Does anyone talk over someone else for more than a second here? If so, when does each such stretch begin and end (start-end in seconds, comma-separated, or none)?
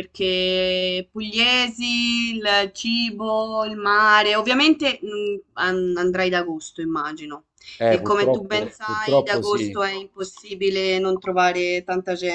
7.9-9.8